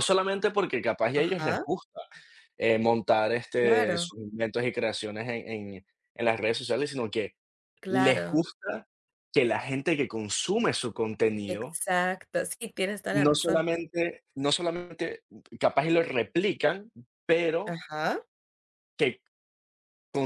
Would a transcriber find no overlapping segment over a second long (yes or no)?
yes